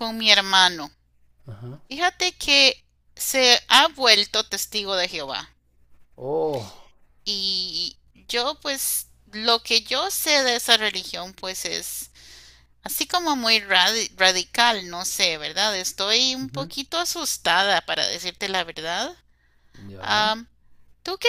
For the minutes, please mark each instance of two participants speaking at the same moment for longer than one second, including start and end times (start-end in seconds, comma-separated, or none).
none